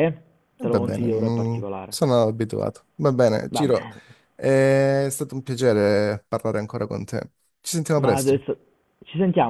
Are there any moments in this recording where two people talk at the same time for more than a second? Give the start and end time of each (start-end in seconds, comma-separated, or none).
0.6-2.0